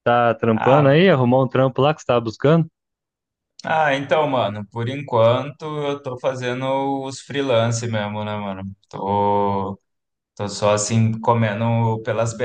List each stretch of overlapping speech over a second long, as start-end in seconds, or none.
none